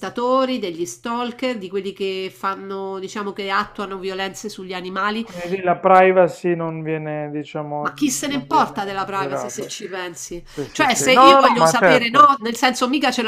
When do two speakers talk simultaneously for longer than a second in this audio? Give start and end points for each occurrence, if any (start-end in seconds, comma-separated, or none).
7.8-9.7, 10.4-12.3